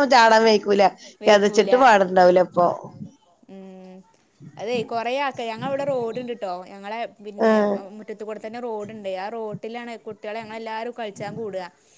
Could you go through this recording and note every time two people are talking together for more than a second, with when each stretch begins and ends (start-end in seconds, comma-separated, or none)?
none